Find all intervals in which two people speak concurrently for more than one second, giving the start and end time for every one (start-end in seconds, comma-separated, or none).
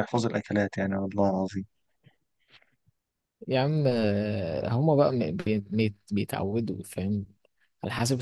none